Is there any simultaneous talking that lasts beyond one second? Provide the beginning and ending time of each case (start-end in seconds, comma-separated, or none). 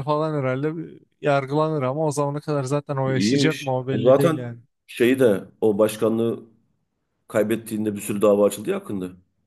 3.1-4.4